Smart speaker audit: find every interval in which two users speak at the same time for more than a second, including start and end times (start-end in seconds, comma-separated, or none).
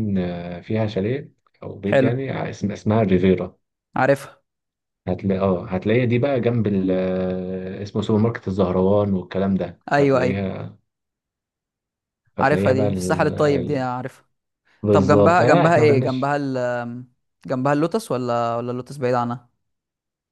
12.4-13.9, 14.9-16.3